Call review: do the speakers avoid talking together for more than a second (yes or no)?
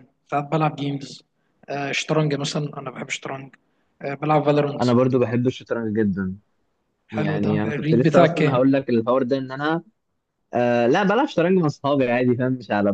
no